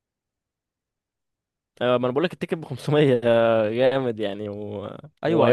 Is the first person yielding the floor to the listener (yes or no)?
yes